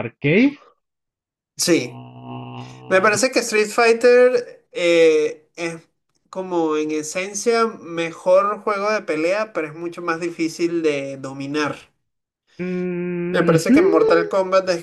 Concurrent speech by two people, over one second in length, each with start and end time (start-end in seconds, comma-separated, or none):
none